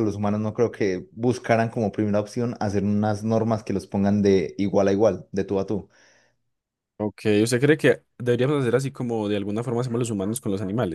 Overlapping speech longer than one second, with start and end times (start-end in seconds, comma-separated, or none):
none